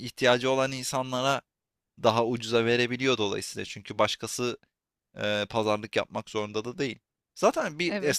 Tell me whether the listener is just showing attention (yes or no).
yes